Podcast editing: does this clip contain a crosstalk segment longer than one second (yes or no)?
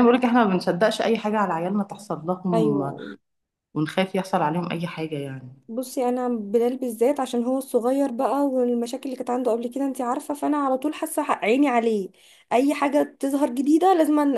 no